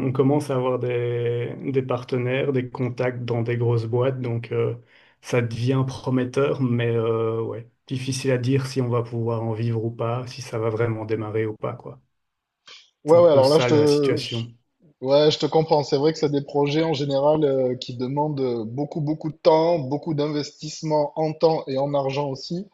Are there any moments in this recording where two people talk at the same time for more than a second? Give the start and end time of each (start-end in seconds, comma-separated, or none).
13.1-14.5